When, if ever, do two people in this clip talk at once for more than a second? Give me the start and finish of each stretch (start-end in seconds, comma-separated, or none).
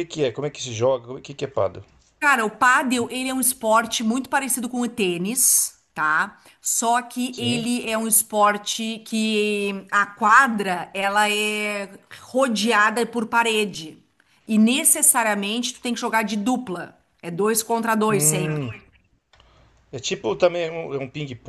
none